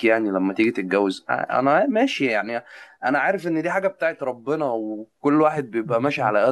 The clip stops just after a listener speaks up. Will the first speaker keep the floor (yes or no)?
yes